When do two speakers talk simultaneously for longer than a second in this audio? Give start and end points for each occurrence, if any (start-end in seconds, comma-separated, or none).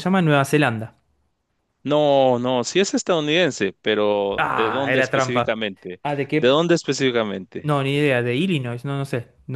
4.4-5.6